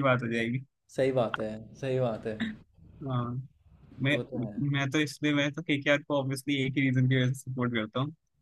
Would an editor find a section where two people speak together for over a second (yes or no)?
no